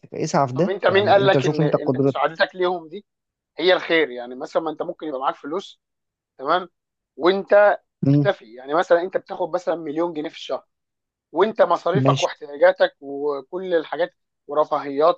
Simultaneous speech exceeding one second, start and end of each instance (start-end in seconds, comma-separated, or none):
0.5-2.2